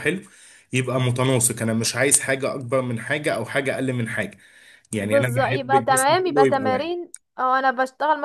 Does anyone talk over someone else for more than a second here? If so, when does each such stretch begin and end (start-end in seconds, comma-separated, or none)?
5.0-6.9